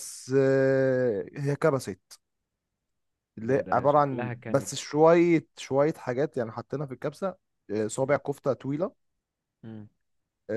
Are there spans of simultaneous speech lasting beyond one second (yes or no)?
yes